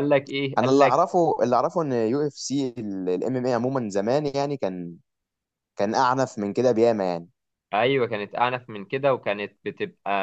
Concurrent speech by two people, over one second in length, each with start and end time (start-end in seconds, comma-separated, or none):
none